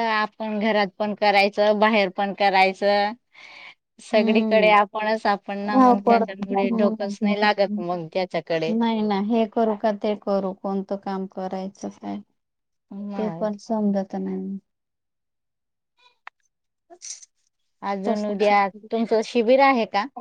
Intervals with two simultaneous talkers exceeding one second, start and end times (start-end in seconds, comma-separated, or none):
5.7-7.8